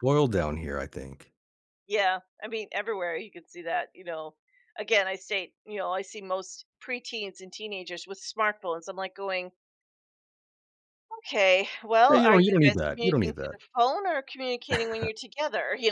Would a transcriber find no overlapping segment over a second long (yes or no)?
no